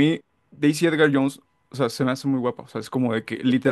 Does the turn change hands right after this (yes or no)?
no